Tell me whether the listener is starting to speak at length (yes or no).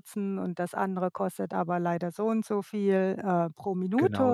no